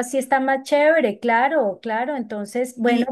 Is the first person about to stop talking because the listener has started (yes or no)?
yes